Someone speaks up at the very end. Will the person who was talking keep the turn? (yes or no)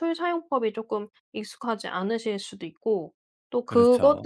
yes